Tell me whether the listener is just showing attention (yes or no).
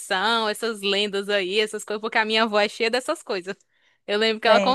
yes